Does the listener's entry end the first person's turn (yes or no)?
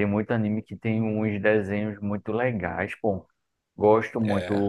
no